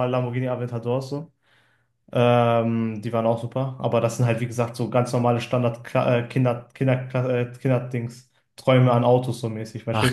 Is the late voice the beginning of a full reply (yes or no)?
yes